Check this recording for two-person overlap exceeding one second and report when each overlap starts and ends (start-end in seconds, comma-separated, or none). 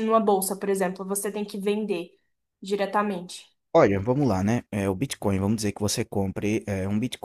none